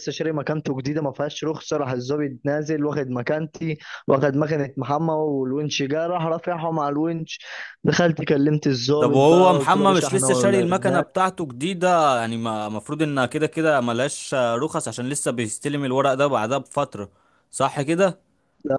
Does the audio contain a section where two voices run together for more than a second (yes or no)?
yes